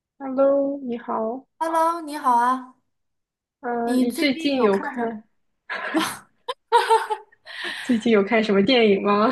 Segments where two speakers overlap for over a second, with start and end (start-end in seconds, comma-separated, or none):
3.8-5.1